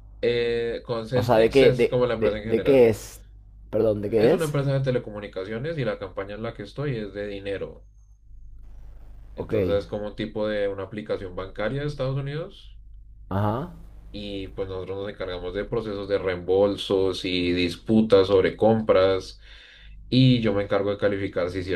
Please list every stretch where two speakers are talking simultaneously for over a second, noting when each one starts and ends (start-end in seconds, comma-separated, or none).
1.1-2.9